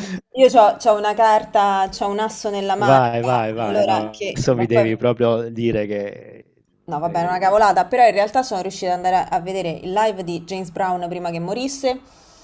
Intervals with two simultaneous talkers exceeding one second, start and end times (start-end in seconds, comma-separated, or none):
2.8-4.9